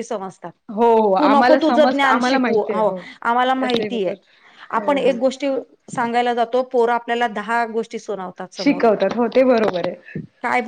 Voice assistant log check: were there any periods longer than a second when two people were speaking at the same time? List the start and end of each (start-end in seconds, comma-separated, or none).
1.2-2.8